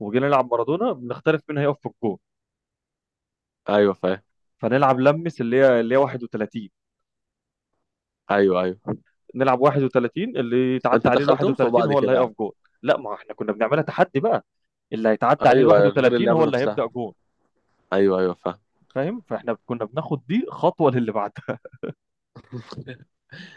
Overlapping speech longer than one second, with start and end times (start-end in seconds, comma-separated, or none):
10.9-12.3, 15.5-16.9